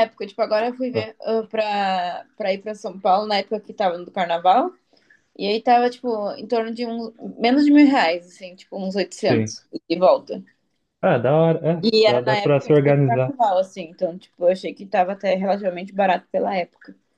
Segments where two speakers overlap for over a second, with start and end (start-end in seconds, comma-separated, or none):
11.8-13.3